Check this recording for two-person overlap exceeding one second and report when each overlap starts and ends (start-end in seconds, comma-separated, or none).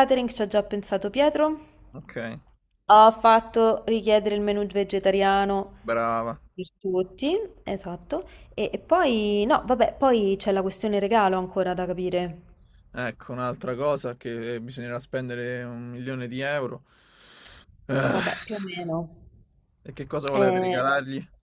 none